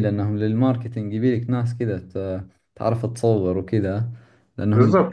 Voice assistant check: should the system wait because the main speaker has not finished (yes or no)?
no